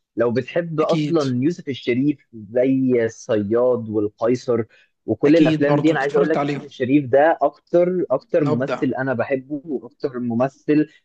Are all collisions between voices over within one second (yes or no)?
no